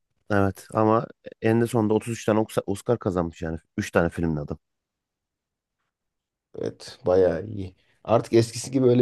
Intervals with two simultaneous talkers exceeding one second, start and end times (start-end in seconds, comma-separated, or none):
none